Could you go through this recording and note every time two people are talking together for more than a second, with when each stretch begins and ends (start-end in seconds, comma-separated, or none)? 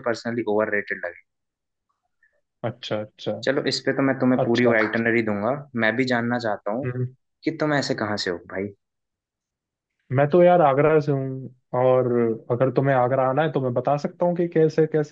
none